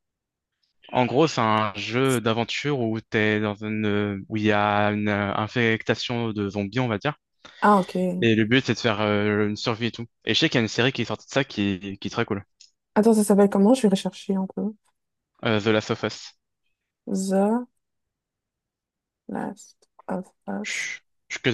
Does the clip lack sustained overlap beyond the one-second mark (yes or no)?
yes